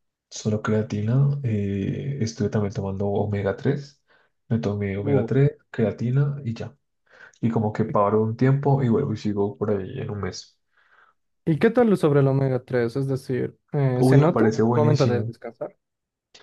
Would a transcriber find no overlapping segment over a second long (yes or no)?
no